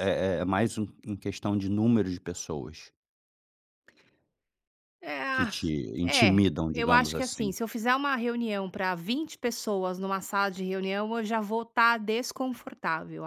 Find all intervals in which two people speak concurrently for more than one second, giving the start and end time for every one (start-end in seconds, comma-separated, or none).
6.0-7.5